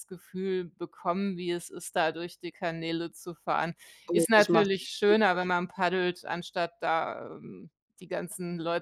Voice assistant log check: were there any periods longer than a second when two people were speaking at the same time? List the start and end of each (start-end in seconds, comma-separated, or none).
4.1-5.6